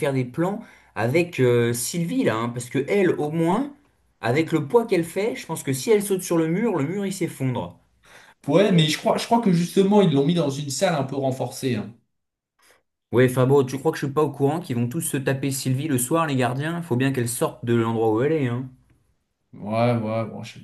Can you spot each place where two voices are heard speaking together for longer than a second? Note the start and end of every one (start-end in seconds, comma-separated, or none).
none